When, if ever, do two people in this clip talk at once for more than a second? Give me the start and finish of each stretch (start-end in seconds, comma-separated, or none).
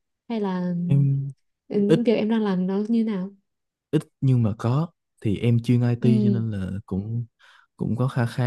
none